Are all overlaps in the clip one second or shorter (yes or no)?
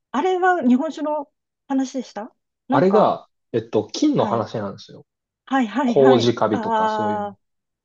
no